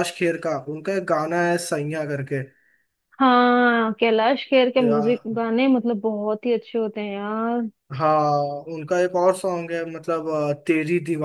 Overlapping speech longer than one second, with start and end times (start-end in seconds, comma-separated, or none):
none